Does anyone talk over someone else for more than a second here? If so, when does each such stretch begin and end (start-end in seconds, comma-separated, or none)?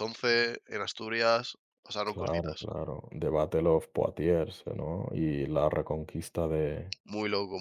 none